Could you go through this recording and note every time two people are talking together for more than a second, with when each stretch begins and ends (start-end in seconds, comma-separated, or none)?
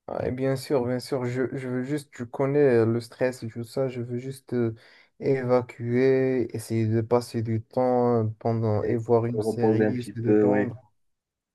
8.8-10.7